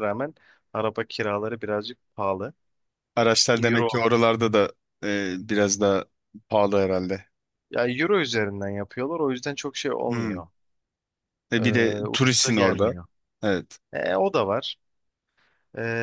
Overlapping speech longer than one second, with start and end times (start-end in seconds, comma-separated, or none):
11.6-13.0